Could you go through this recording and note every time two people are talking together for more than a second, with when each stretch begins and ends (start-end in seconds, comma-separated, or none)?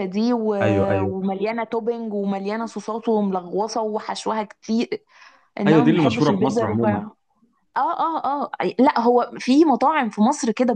5.7-7.0